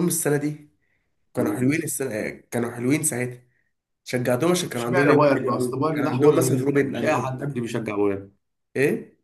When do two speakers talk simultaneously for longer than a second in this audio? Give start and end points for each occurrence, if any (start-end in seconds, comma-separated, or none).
4.6-7.7